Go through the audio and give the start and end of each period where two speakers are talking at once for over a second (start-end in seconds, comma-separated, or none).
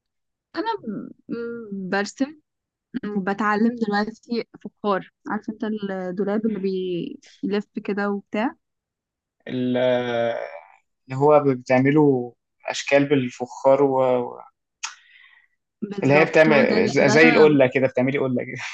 16.0-17.6